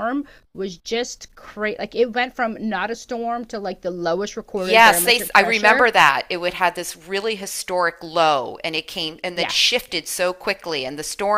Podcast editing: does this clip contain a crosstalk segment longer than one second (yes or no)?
yes